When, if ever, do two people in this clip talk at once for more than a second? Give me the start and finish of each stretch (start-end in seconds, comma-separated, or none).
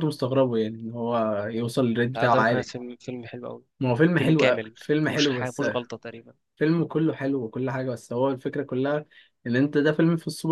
4.2-5.6